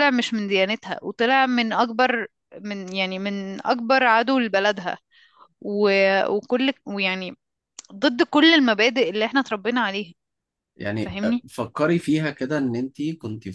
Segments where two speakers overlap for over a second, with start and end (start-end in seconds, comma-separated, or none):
none